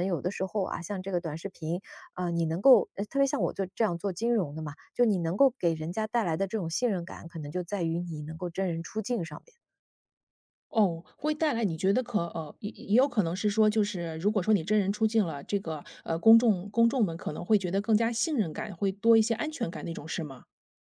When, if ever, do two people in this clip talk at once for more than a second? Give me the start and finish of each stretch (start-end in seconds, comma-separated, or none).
none